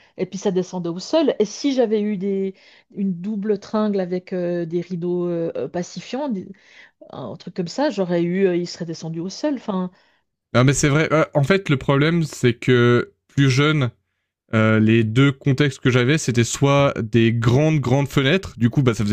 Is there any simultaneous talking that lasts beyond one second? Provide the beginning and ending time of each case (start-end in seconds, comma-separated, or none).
none